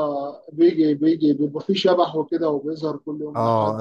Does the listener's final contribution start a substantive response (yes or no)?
yes